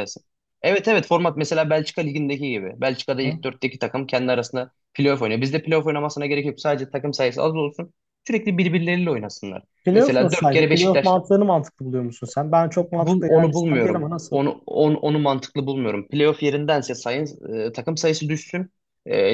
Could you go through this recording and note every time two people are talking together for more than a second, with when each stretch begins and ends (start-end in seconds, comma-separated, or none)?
9.8-11.1, 13.0-14.4